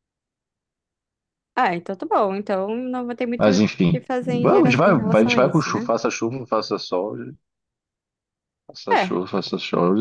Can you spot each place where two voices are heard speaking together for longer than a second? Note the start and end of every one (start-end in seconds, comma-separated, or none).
3.4-5.9